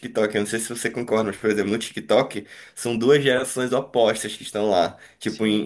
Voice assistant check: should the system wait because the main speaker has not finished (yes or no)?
yes